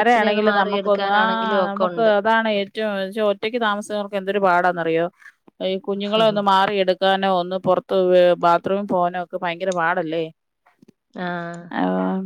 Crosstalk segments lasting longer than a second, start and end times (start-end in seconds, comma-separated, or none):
0.5-2.1